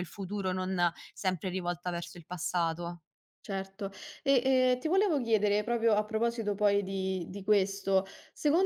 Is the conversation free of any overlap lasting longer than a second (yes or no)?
yes